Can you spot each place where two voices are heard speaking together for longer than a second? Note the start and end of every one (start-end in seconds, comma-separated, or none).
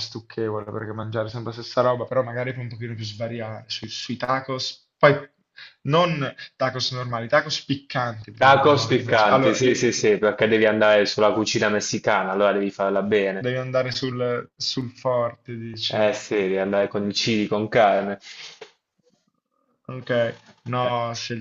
8.4-9.8